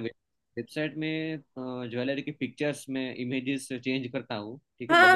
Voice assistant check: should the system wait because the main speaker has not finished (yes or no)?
no